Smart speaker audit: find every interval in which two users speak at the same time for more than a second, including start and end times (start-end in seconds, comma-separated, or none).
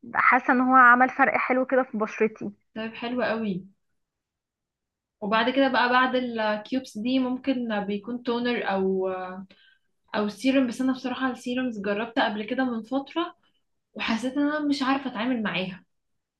none